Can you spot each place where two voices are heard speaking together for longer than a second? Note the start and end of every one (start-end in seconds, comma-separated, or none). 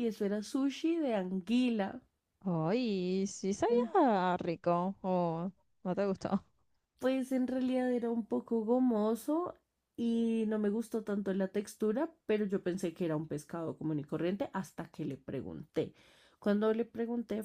none